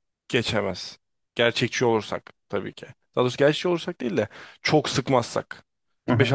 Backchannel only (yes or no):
no